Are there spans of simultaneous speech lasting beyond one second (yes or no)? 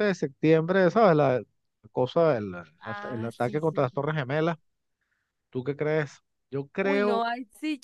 yes